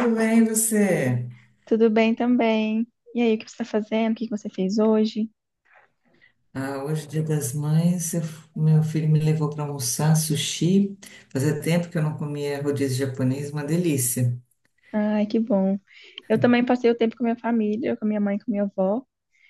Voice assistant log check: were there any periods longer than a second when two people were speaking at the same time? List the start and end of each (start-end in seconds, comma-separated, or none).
none